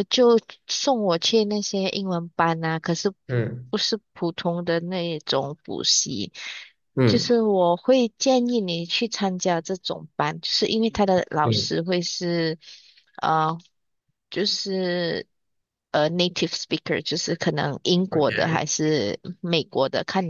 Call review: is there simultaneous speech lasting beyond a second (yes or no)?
no